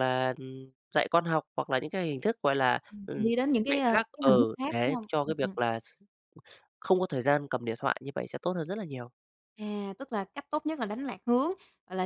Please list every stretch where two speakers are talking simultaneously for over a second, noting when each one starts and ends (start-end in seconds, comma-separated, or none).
2.9-5.6